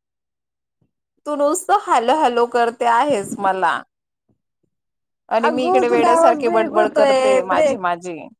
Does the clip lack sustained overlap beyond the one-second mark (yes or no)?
no